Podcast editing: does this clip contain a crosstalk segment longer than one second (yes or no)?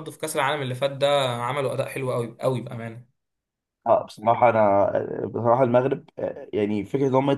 no